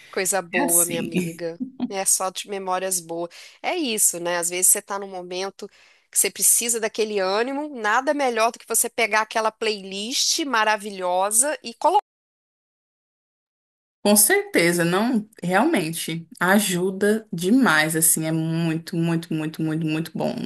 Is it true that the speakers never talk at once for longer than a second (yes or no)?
yes